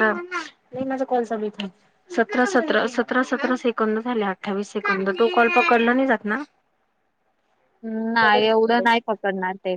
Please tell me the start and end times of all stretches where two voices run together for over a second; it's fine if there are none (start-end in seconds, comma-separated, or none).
none